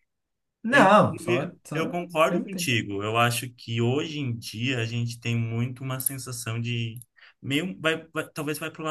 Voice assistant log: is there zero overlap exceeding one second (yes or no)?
no